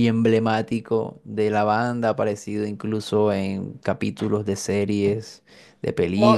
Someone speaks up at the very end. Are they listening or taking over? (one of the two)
taking over